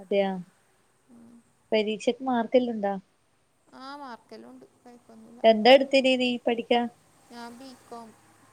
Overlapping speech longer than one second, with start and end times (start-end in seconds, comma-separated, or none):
none